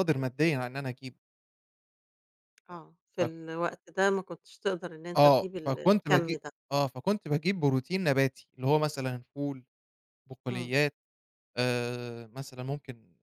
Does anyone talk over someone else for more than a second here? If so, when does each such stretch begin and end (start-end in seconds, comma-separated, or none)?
5.2-6.5